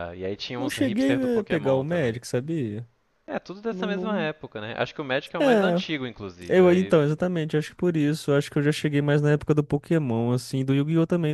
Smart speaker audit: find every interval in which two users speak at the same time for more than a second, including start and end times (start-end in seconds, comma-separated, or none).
0.6-2.2